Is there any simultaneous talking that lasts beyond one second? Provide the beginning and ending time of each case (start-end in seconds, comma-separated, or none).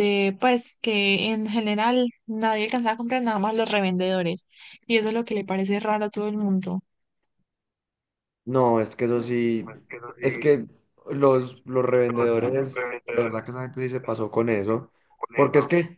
none